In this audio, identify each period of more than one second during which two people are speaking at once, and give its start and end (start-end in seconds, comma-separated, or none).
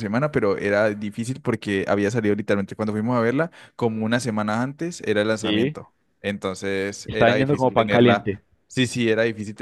7.0-8.3